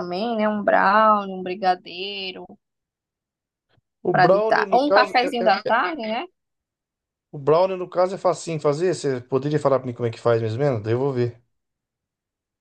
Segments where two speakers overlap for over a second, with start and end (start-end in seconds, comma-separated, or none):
4.1-5.7